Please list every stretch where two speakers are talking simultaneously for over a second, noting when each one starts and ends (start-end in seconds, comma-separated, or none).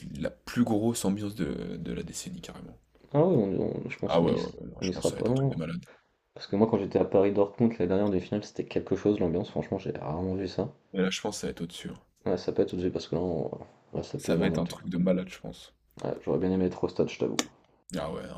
4.1-5.6